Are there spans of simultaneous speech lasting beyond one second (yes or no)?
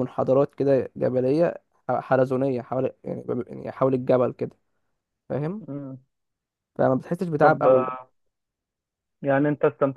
no